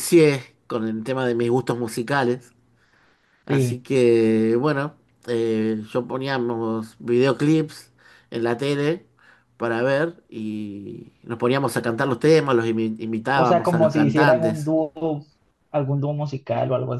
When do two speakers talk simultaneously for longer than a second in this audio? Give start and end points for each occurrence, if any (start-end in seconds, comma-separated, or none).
13.3-14.7